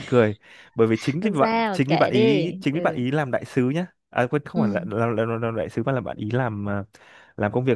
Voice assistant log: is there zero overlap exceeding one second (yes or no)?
no